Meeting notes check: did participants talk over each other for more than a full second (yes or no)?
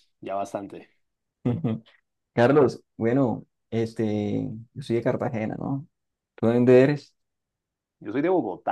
no